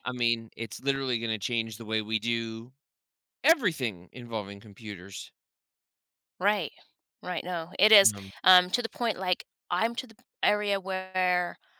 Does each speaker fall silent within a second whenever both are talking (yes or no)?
yes